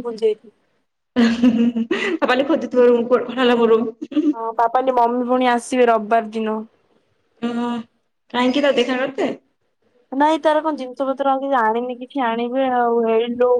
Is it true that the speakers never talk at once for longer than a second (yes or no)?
yes